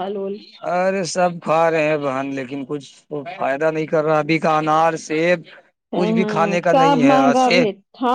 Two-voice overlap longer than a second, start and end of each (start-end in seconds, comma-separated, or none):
6.0-7.6